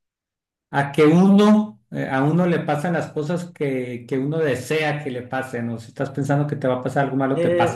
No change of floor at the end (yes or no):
no